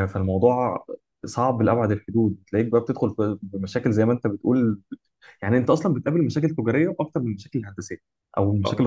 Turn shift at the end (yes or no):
yes